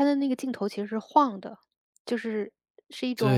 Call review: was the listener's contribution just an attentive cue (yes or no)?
yes